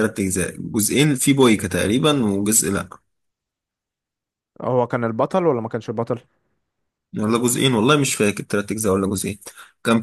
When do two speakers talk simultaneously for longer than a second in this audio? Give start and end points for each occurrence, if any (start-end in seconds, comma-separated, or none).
none